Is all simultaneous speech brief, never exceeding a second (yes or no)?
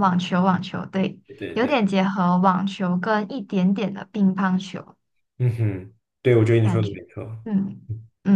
yes